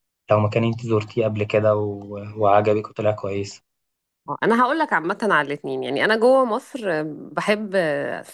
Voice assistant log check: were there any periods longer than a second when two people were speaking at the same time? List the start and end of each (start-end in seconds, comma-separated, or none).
none